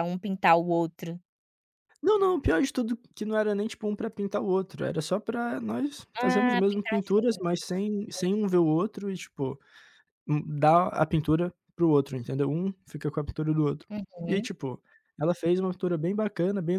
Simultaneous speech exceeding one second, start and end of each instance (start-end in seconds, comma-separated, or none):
6.2-7.8